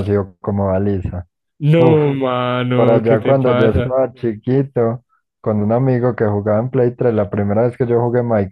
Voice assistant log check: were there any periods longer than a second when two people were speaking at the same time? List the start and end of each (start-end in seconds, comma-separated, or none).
2.7-4.0